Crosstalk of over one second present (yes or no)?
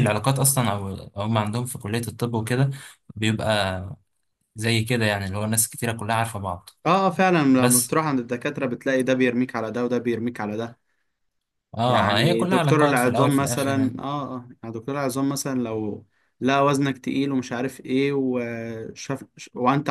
yes